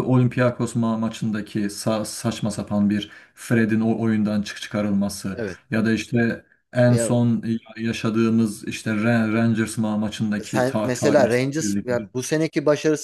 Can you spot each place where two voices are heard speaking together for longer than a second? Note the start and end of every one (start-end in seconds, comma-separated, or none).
10.4-12.1